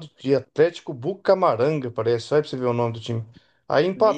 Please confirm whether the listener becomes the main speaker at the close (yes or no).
no